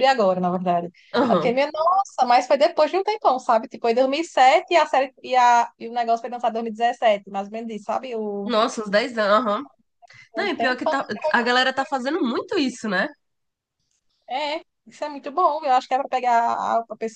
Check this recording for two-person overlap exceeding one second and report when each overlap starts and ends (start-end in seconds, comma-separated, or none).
10.3-11.9